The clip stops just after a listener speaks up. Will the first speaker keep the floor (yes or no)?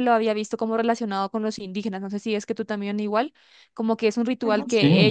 yes